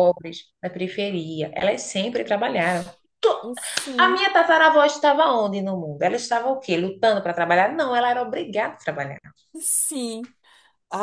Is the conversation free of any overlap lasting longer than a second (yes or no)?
yes